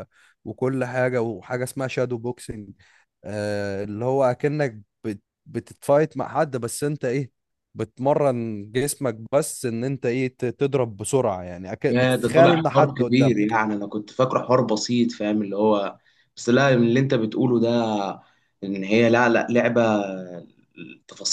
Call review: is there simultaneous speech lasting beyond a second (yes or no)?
yes